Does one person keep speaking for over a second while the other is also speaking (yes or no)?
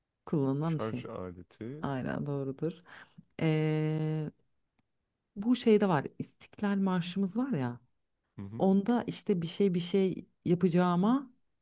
no